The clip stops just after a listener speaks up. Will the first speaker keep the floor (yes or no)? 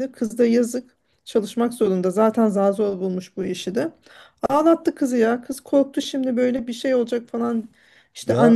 yes